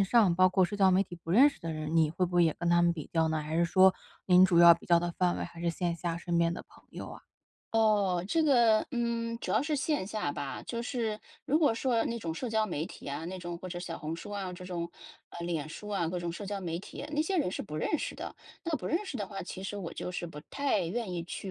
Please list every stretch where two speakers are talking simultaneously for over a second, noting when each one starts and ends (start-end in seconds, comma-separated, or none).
none